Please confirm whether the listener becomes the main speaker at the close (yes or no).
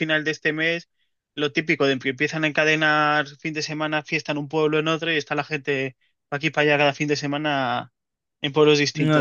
yes